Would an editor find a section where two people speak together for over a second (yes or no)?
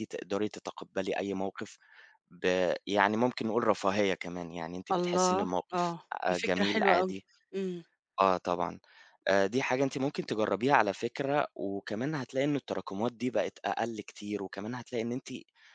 yes